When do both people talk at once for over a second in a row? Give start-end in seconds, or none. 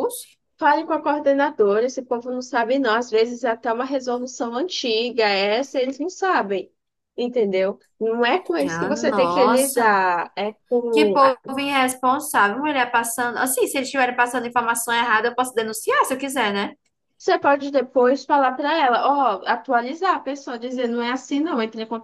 8.7-10.0